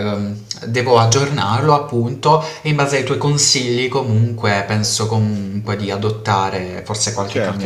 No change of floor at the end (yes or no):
no